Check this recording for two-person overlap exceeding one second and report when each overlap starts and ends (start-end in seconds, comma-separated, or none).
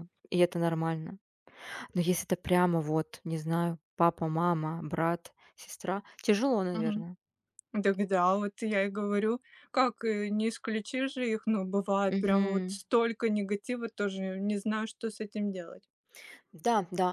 none